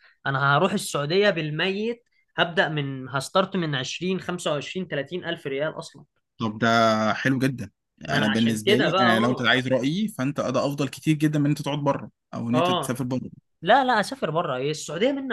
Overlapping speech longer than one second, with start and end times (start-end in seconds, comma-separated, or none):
8.1-9.5